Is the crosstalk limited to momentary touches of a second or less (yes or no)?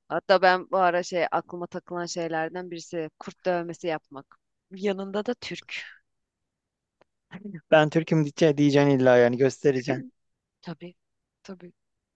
yes